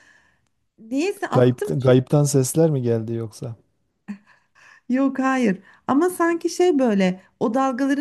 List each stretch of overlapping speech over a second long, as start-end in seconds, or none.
none